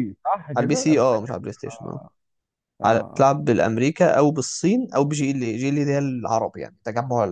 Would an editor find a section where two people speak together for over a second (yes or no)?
yes